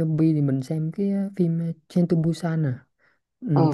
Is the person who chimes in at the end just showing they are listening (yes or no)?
no